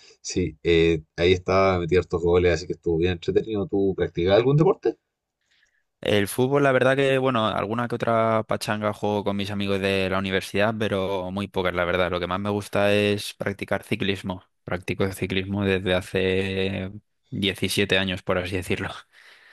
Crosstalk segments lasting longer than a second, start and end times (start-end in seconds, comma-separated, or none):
none